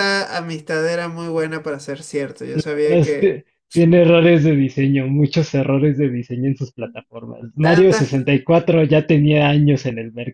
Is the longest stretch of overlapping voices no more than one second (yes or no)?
yes